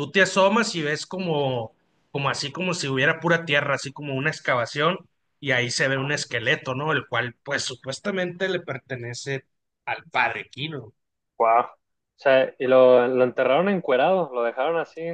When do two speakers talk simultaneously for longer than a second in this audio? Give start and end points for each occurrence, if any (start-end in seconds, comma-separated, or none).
none